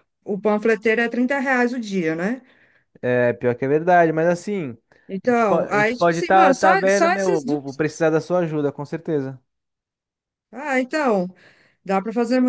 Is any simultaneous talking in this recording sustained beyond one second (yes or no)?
yes